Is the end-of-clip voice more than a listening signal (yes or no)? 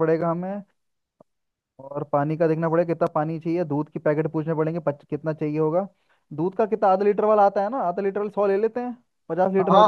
yes